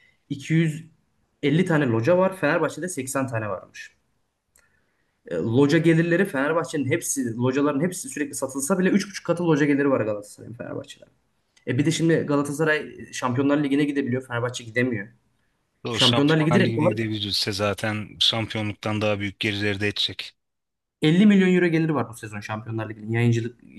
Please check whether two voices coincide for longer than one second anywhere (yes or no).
yes